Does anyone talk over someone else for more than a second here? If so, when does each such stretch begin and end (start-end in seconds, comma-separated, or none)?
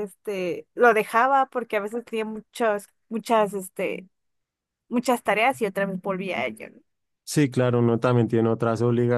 none